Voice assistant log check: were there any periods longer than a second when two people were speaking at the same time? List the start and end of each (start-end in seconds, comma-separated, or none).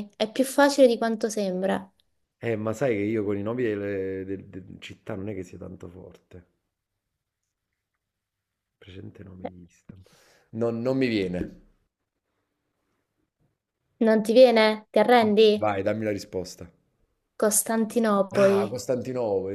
none